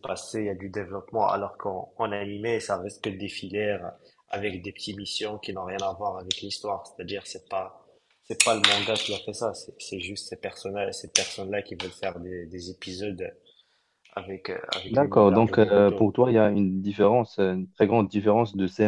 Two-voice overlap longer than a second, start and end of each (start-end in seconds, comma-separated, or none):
14.9-16.1